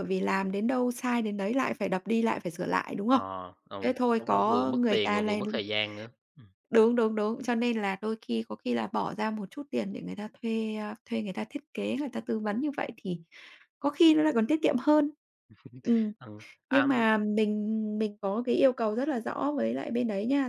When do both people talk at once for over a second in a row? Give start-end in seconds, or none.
3.8-5.4